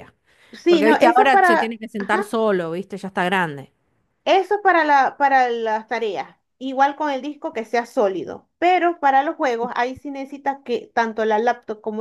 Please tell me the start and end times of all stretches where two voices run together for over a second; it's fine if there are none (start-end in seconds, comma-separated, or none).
0.7-2.2